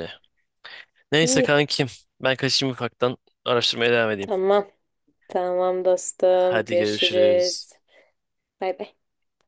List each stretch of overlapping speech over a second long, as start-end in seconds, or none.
6.3-7.7